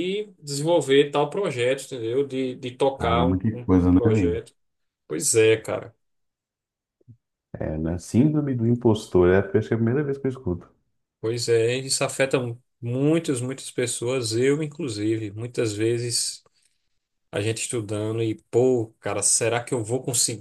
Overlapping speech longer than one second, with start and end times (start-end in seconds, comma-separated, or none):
3.0-4.4